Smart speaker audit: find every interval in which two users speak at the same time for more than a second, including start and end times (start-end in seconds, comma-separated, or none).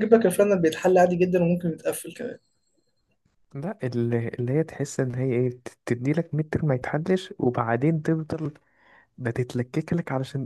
none